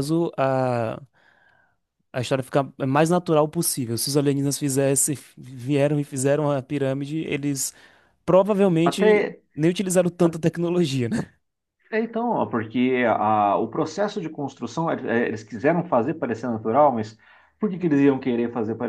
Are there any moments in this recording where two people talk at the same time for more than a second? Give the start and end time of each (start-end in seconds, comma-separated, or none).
none